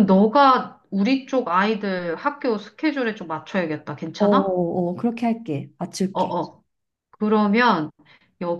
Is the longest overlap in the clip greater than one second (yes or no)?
no